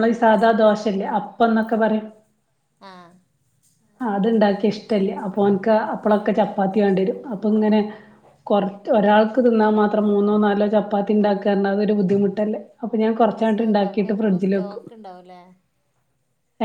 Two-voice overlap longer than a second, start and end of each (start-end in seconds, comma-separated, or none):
13.3-14.8